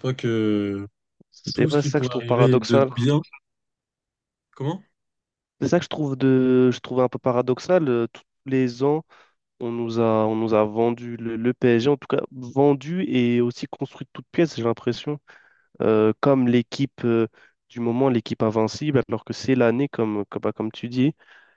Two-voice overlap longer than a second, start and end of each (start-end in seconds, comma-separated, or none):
1.5-3.0